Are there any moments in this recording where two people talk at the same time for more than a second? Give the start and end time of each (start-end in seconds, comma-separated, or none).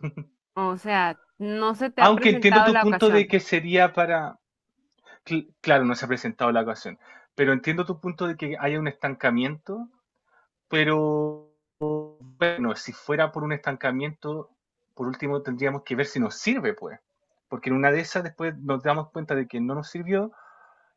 2.0-3.4